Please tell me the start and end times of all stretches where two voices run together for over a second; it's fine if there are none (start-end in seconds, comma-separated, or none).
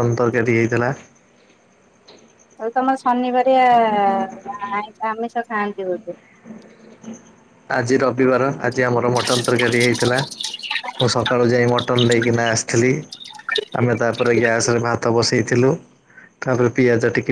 none